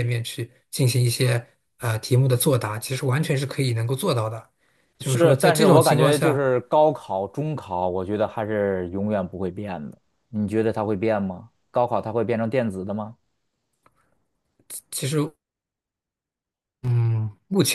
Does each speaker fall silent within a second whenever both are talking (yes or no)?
no